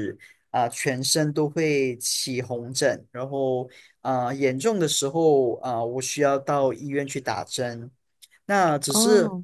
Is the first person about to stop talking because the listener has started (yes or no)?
no